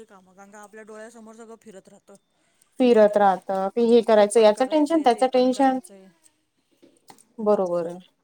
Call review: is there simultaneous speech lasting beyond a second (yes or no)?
yes